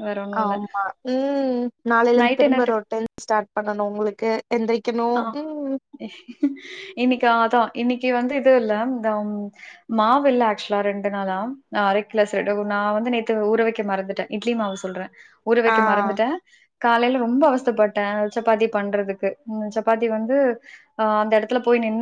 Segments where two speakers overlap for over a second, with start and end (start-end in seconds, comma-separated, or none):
none